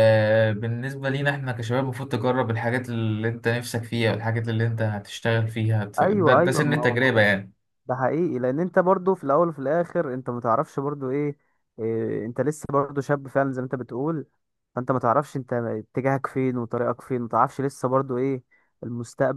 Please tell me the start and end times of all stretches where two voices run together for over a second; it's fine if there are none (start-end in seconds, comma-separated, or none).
6.0-7.2